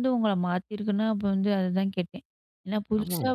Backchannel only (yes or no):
yes